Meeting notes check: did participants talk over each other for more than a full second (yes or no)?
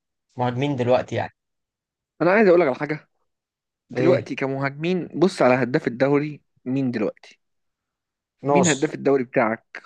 no